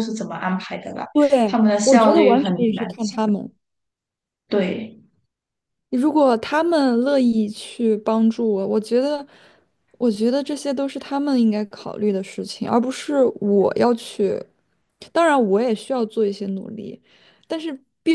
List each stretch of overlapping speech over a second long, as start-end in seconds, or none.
1.4-3.2